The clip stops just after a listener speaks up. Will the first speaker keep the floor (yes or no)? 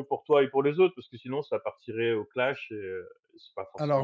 no